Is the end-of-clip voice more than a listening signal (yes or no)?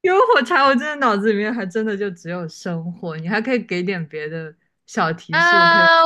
yes